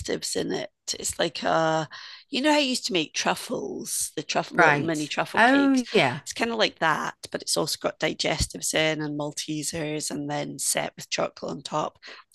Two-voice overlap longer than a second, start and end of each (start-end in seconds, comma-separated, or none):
4.5-5.8